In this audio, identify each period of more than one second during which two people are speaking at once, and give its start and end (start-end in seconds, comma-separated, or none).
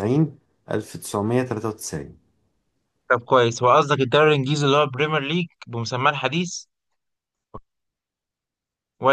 none